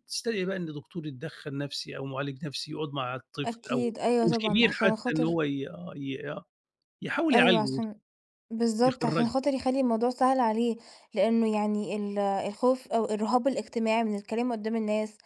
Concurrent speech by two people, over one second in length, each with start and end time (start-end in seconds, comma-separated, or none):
3.5-5.4